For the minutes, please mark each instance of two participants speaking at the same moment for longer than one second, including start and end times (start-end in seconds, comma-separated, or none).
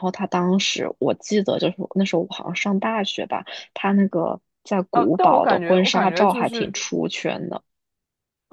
4.9-6.7